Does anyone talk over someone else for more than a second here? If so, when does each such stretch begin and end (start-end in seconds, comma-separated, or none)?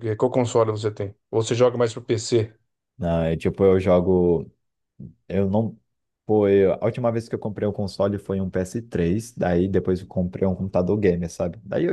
none